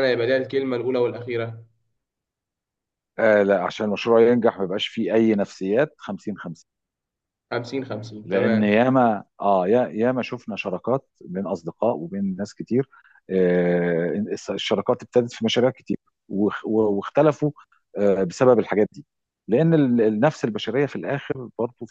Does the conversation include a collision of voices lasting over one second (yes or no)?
no